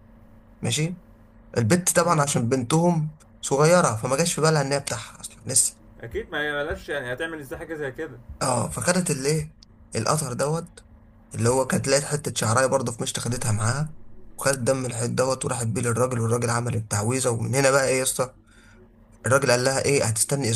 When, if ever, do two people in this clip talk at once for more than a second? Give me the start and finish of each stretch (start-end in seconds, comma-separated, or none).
none